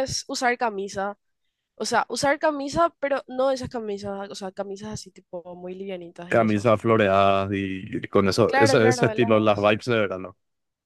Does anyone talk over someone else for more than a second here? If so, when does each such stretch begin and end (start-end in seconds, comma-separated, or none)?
8.5-9.7